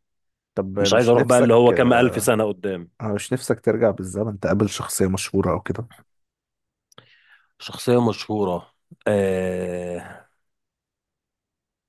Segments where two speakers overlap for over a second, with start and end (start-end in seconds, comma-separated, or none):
0.8-2.3